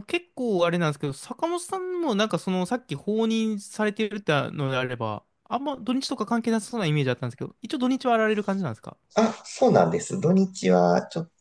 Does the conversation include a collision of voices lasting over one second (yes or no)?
no